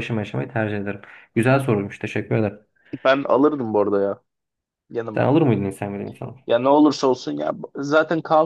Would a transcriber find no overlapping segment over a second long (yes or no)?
yes